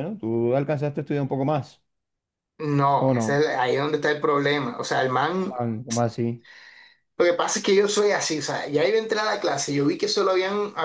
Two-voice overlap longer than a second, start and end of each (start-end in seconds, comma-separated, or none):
none